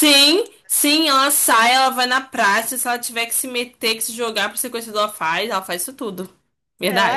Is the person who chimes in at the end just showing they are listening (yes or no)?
no